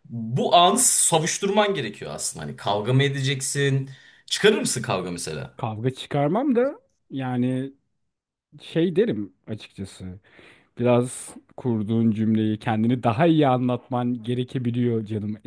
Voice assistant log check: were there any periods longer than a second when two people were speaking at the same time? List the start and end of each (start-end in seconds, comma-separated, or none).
none